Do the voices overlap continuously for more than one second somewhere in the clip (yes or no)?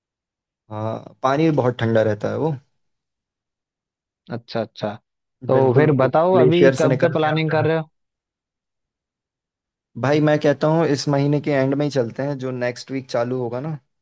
yes